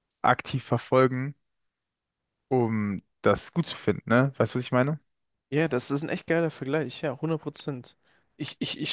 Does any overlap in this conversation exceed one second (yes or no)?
no